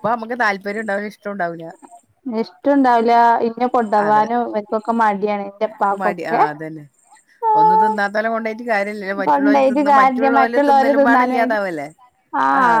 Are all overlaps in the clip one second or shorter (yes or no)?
no